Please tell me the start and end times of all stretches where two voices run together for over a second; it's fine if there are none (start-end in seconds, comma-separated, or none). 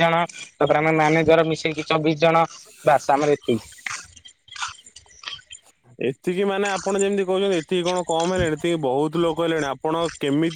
none